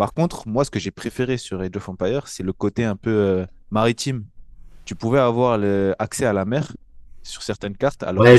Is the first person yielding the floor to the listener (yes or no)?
yes